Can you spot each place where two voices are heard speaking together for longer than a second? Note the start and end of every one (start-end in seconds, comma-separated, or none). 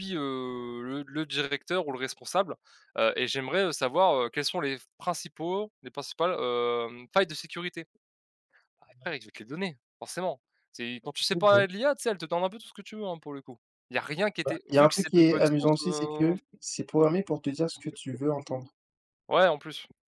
14.4-16.3